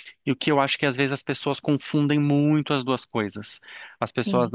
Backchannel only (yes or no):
yes